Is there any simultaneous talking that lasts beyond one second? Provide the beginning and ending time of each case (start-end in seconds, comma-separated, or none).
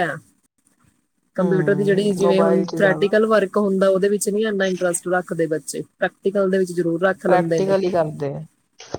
1.4-3.1